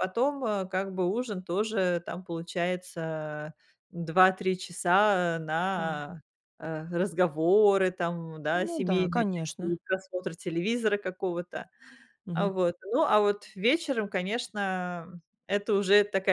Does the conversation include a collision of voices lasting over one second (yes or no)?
yes